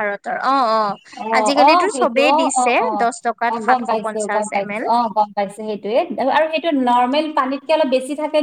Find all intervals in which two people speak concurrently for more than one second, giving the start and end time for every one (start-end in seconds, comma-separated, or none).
1.4-4.8